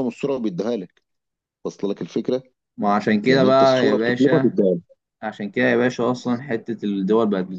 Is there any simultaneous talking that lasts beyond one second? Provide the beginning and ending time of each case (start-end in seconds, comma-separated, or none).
3.2-4.5